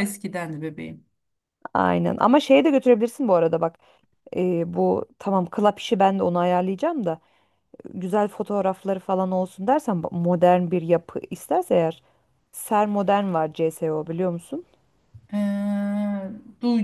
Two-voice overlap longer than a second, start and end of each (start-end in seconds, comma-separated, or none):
none